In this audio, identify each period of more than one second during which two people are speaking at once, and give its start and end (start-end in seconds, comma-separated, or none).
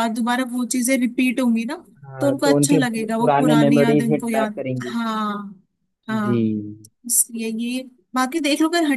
2.2-5.0